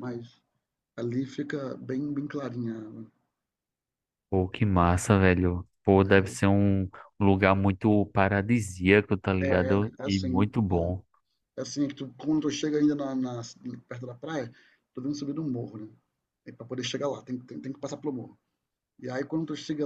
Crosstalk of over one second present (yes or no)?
yes